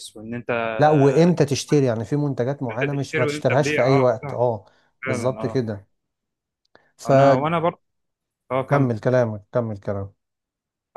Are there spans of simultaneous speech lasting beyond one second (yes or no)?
yes